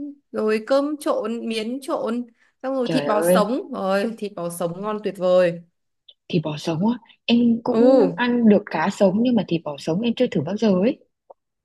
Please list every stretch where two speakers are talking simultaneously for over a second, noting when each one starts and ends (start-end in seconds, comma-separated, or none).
none